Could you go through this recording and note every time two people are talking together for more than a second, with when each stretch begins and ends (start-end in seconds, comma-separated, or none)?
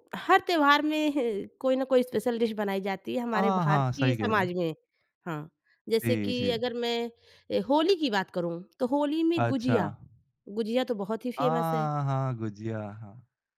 3.3-4.6